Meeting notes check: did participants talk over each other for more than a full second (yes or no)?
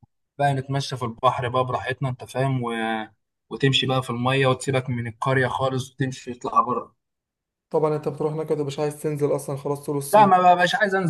no